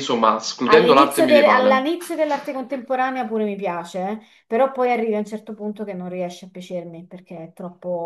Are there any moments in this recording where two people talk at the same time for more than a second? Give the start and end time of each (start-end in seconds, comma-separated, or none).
0.6-1.9